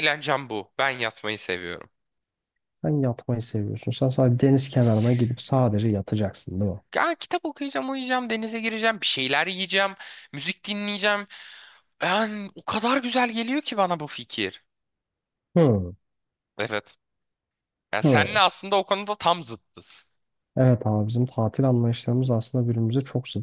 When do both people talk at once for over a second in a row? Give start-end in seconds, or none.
none